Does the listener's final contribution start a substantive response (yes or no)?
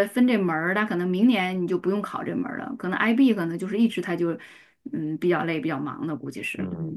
yes